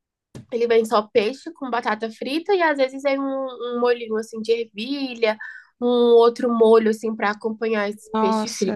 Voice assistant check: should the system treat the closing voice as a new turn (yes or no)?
yes